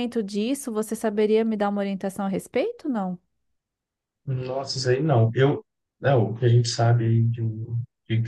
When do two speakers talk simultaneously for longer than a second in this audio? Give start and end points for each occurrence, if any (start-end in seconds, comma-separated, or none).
none